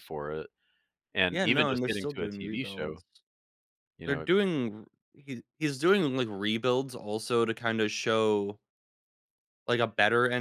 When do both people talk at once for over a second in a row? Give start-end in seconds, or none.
1.3-3.0